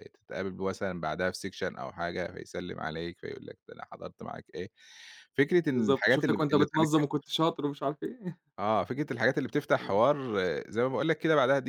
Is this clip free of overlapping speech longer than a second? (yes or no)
no